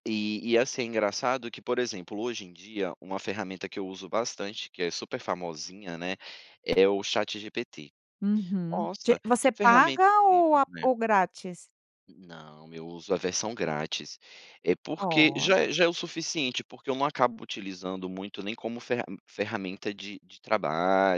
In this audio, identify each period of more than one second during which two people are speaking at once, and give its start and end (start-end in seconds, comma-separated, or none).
8.7-10.8